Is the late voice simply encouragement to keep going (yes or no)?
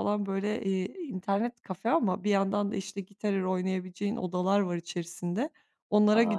yes